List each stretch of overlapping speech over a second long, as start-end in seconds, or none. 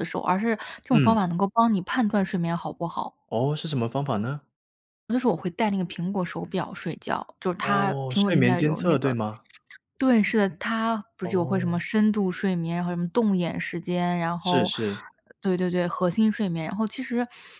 7.6-9.2